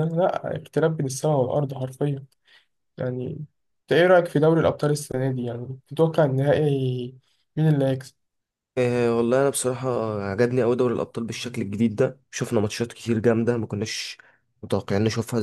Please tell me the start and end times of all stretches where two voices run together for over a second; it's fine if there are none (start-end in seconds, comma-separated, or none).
none